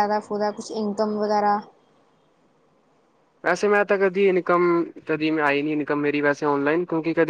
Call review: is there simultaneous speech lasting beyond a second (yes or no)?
no